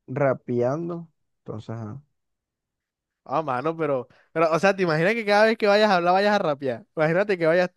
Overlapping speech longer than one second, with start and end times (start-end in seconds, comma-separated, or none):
none